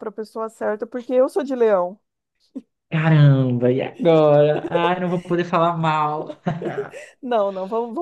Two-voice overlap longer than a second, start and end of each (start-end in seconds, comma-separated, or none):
none